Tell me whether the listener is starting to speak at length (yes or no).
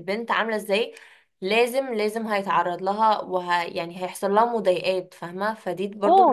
yes